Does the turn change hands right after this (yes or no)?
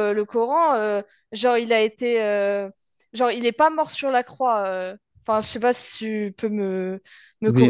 yes